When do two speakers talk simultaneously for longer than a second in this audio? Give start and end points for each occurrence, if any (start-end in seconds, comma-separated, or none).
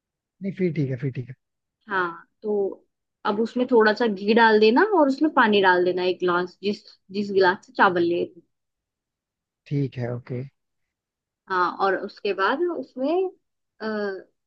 none